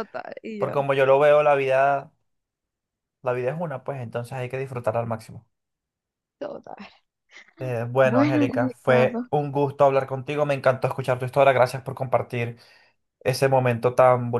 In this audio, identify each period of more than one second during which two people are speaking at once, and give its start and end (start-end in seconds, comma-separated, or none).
8.0-9.3